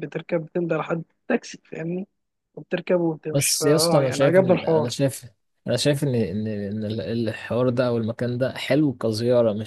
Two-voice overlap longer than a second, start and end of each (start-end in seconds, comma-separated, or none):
3.3-4.9